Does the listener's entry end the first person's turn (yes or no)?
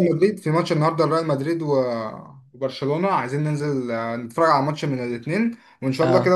no